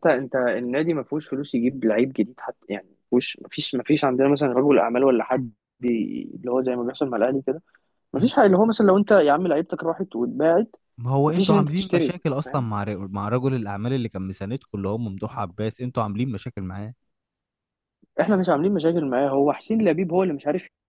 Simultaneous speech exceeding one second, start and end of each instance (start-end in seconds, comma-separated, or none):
11.3-12.7